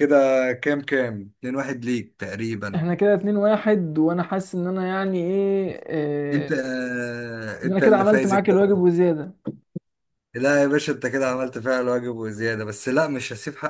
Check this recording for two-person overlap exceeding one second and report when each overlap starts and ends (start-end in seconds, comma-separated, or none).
7.6-8.8